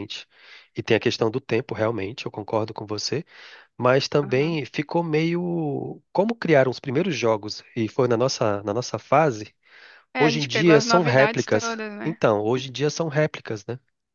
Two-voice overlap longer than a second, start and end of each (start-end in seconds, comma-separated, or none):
10.2-12.2